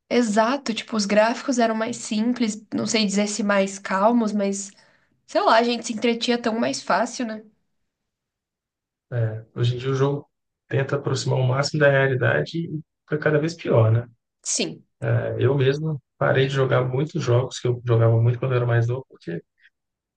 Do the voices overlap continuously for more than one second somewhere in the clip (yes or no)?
no